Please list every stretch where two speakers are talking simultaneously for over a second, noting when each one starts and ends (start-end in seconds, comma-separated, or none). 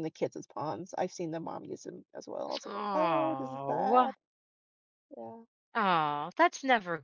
2.6-4.1